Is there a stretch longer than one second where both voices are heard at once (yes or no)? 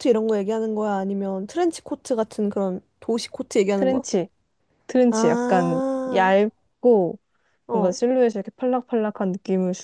yes